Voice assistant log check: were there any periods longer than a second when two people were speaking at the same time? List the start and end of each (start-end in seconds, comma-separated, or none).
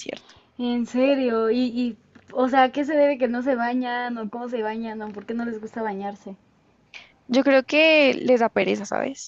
none